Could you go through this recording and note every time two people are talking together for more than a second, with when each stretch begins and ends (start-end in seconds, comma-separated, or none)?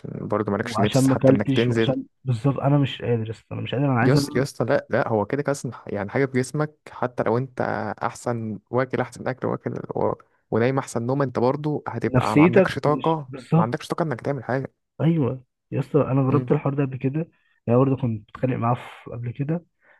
0.6-1.9, 12.1-13.7